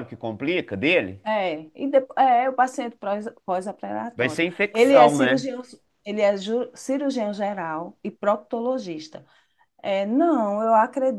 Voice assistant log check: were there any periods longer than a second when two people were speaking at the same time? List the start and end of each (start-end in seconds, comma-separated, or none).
4.2-5.5